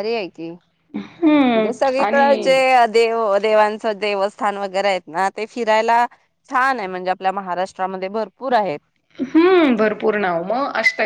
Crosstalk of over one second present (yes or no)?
yes